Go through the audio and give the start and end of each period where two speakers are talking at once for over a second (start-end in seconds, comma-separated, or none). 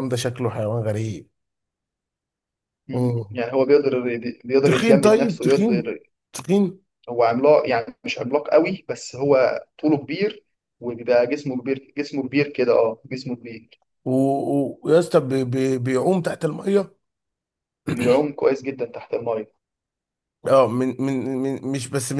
4.6-5.9